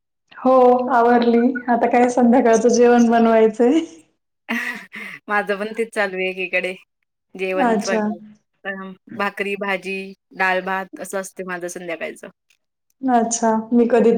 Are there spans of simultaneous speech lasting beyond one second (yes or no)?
no